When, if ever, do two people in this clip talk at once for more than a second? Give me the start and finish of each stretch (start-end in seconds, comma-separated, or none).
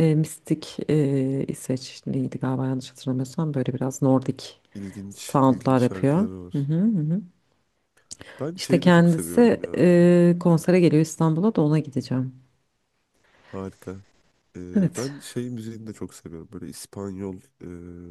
5.1-6.7, 8.6-10.0